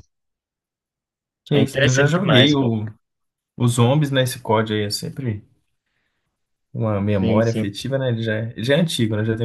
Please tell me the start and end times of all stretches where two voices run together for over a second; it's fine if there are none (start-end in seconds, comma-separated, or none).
1.5-2.7